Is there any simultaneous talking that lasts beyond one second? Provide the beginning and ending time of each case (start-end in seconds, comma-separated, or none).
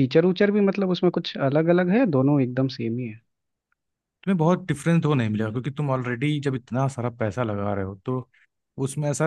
none